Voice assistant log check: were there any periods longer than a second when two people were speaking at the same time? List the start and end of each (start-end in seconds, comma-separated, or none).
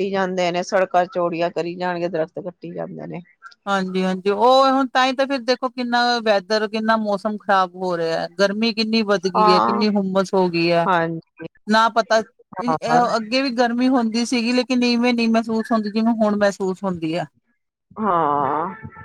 none